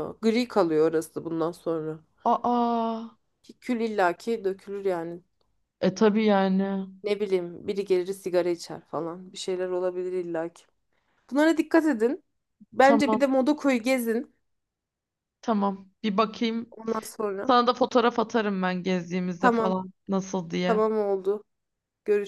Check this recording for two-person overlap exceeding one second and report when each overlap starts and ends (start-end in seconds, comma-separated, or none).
none